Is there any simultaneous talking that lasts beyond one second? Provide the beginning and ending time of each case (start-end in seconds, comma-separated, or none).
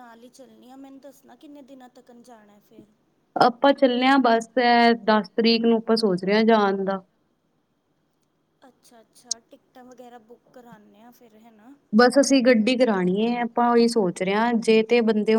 none